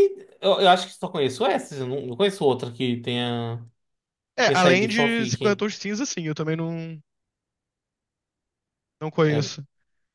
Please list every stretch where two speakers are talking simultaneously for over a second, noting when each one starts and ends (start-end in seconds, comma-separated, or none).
4.4-5.6